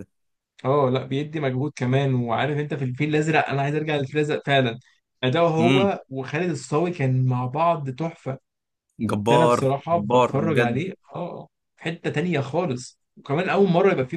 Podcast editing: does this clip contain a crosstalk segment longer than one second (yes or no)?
yes